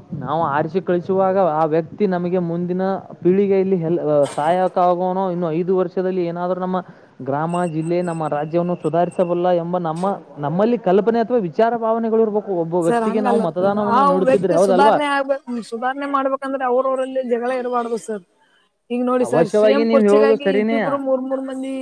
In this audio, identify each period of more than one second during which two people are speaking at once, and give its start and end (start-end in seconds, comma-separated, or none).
19.3-20.8